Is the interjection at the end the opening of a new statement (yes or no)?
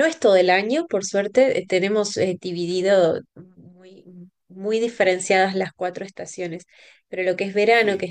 no